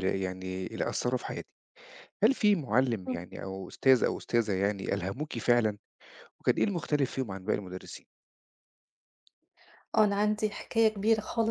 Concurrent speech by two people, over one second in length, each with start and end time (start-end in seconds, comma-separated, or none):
none